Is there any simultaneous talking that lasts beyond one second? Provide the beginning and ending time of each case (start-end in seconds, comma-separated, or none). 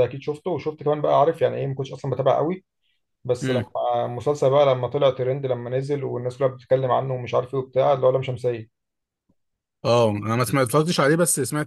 none